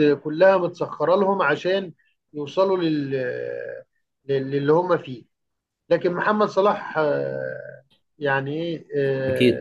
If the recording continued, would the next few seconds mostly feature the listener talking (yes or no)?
no